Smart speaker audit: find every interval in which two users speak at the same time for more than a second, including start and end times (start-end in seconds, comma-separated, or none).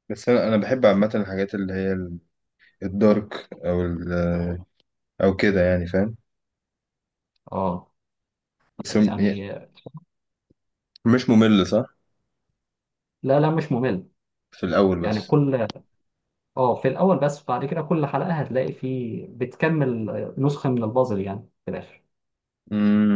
none